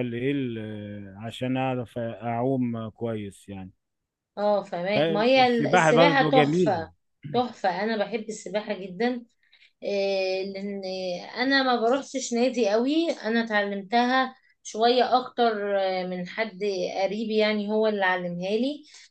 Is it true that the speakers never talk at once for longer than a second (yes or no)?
no